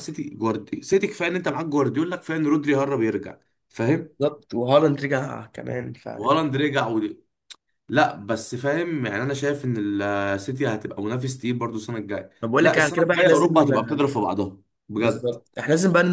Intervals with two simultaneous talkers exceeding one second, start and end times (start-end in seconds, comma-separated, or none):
12.4-13.7